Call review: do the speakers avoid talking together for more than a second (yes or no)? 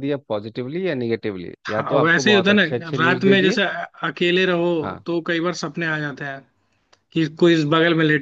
no